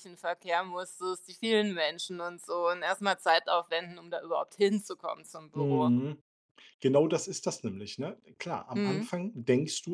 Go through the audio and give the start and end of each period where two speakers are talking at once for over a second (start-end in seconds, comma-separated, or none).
none